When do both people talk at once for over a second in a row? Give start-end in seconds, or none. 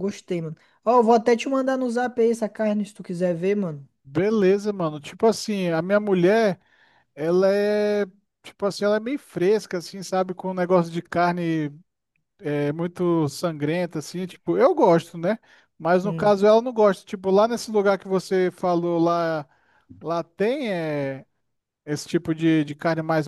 none